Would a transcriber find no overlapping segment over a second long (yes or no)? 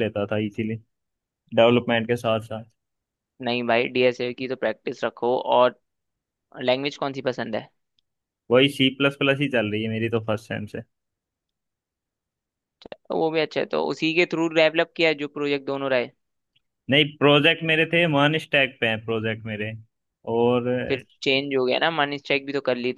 yes